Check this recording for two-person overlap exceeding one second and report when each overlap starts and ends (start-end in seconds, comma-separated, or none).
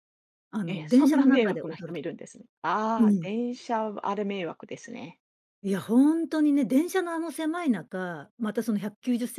0.6-2.1